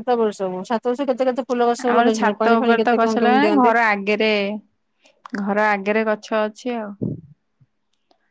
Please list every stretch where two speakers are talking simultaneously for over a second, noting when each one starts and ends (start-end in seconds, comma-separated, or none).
1.9-3.7